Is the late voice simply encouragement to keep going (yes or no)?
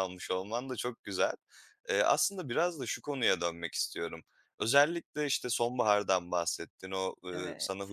yes